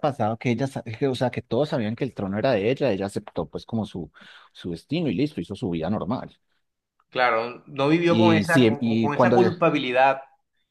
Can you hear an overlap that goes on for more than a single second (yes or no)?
yes